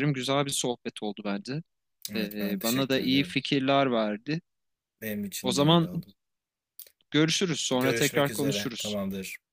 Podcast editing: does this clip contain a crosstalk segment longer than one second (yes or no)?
yes